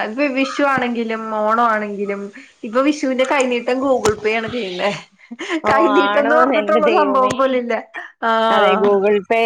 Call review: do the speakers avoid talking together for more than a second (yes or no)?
no